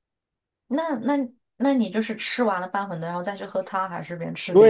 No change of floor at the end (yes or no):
no